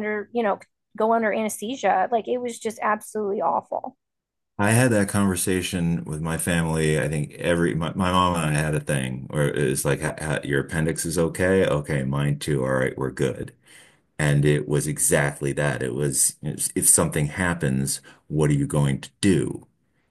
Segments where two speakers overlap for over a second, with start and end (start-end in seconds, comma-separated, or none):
none